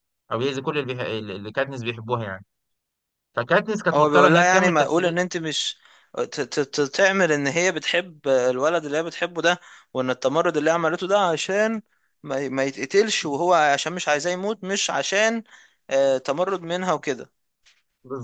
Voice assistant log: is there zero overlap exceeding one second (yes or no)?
no